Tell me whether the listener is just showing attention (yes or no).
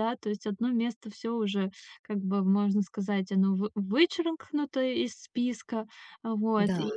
yes